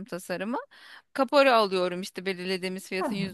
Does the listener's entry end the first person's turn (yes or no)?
no